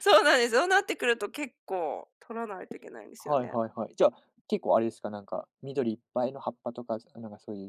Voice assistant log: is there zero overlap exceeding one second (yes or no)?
yes